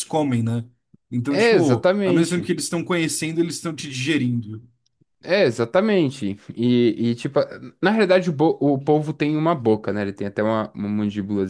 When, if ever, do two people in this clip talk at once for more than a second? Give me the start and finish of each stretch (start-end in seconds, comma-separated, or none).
1.3-2.5